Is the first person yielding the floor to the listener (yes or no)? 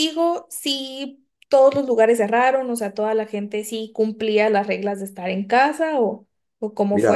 yes